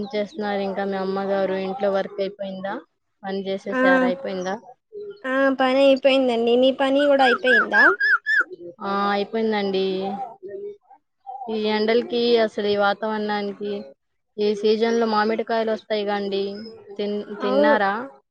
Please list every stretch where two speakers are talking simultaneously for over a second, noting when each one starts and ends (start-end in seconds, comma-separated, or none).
none